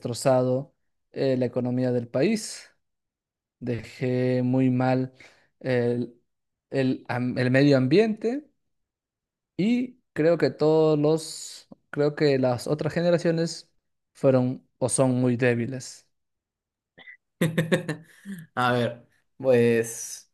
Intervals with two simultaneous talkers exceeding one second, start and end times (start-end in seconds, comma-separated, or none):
none